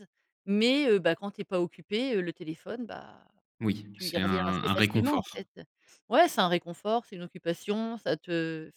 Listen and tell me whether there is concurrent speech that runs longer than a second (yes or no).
yes